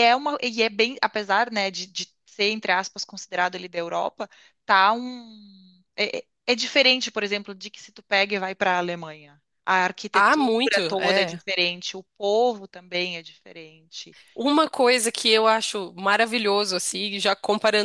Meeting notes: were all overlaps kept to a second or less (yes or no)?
no